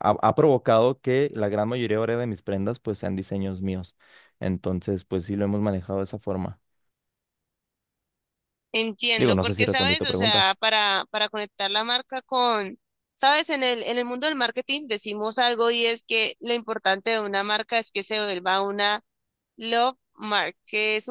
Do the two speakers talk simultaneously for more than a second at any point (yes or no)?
yes